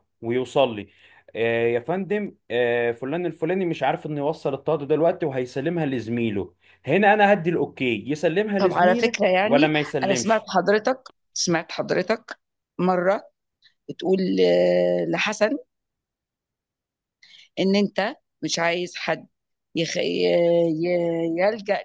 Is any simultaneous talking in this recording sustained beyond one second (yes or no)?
yes